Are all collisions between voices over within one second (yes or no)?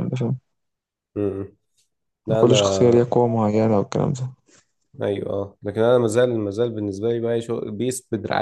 yes